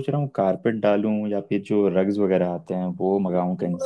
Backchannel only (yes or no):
no